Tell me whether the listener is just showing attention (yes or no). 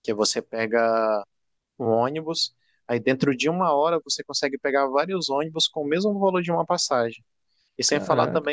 yes